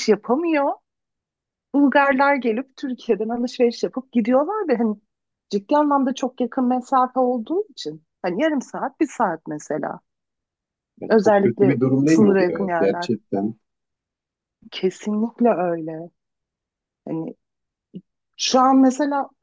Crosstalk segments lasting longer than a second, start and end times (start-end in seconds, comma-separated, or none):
11.1-13.1